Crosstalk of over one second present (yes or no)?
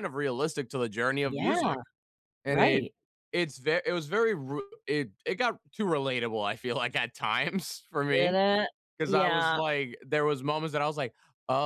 no